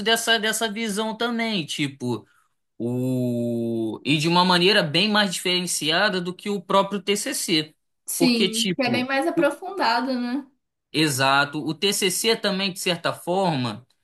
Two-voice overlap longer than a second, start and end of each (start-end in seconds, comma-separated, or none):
8.2-9.5